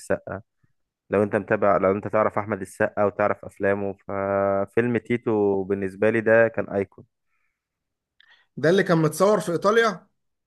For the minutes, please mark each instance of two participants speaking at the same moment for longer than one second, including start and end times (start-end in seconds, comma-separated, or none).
none